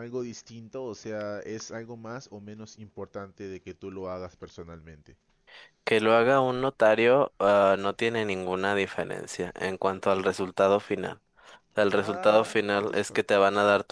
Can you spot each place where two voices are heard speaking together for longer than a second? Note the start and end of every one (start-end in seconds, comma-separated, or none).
11.9-13.4